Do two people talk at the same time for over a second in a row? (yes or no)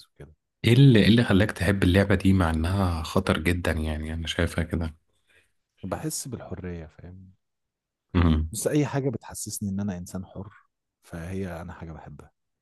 no